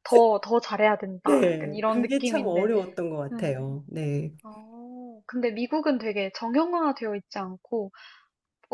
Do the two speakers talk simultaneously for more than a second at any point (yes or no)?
yes